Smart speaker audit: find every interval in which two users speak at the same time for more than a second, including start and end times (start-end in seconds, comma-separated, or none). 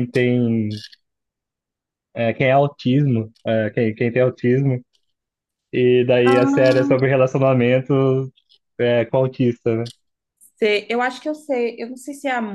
none